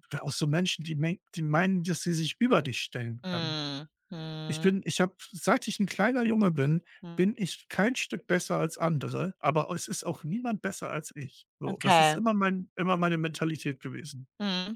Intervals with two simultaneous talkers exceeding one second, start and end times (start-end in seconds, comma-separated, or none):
none